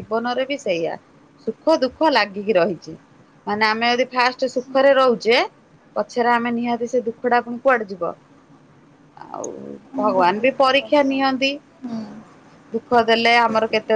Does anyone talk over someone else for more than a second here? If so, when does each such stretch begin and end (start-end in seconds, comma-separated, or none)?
10.0-11.5